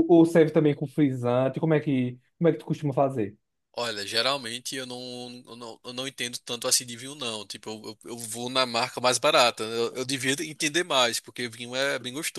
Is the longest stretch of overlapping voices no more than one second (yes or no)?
yes